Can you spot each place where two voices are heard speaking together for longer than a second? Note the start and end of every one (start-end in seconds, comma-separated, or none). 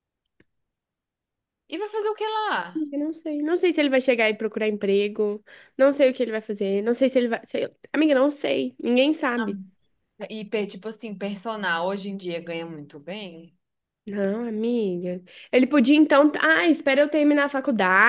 none